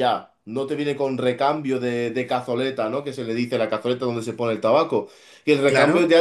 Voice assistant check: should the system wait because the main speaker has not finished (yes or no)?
yes